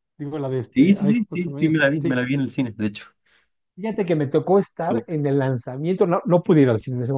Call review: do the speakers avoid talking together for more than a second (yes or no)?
no